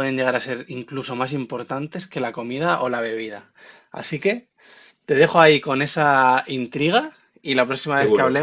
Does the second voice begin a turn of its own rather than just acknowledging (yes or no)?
no